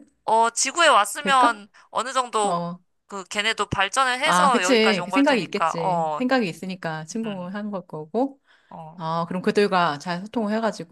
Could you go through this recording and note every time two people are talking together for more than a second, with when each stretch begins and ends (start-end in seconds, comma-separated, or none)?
4.2-6.2